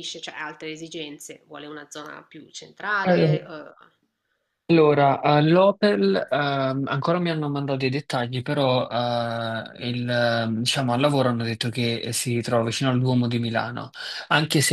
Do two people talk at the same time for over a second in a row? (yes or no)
no